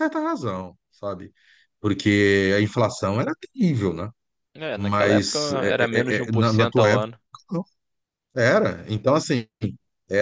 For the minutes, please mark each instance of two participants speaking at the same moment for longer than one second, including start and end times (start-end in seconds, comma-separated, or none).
4.8-7.1